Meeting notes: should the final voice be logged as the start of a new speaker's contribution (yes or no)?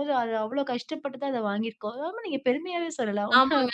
yes